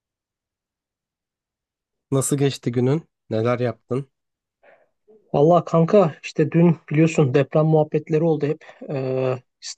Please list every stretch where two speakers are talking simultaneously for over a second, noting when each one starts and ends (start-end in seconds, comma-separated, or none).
none